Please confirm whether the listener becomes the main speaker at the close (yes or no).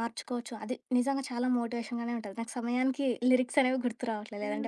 yes